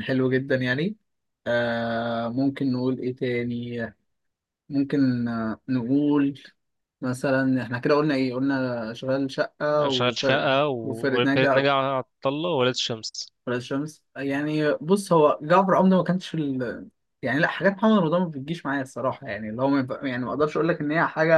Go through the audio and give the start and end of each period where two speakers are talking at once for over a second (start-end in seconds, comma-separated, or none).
9.8-11.5